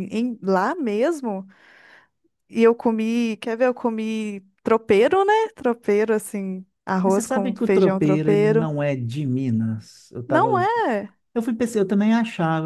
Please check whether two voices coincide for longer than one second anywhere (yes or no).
yes